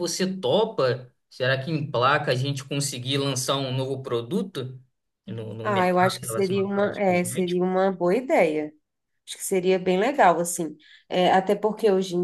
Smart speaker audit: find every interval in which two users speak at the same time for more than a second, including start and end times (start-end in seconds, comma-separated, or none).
5.6-7.6